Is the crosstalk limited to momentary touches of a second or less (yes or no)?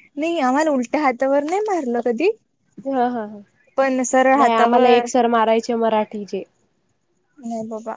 no